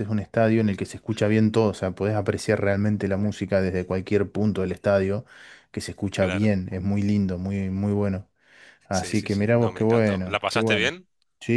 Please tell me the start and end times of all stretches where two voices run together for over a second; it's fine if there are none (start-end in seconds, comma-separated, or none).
8.9-10.9